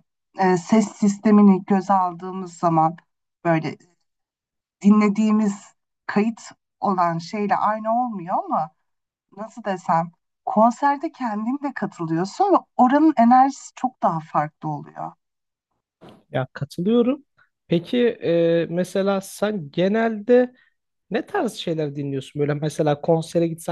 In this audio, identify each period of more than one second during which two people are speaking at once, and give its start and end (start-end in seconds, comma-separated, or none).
none